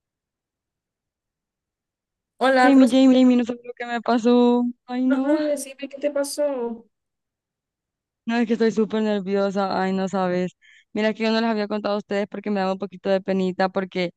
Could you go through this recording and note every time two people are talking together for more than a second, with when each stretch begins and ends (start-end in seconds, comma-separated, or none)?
none